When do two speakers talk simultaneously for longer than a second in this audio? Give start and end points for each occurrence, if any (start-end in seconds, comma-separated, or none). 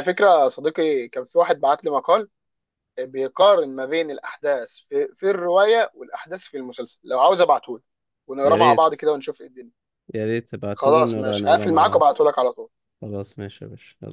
10.8-12.0